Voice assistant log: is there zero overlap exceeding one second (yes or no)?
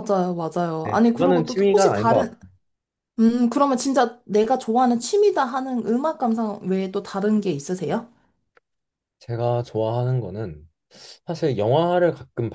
no